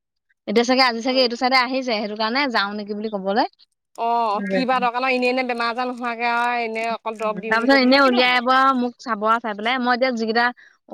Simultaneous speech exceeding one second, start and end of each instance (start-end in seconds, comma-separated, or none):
7.2-8.5